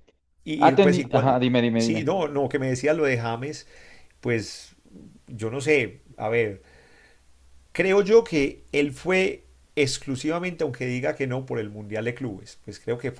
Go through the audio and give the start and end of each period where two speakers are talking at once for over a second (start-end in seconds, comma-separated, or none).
0.6-2.1